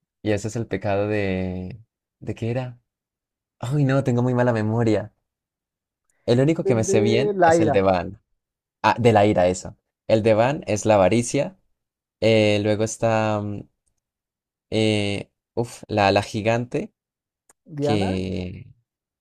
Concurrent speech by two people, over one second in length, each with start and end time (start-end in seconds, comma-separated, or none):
6.7-7.9